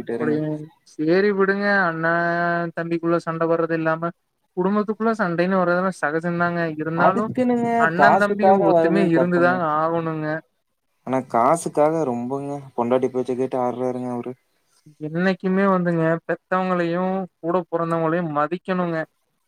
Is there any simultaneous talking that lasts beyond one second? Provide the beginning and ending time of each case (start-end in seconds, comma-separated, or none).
7.9-9.5